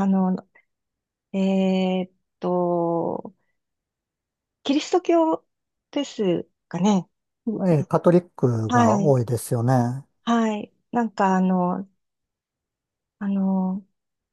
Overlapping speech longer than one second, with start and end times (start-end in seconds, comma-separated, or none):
none